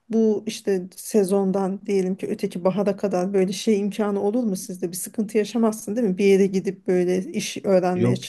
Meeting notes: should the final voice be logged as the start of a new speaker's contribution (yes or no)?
yes